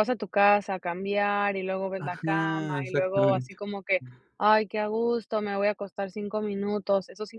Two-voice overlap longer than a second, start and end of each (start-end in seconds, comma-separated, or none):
2.0-3.6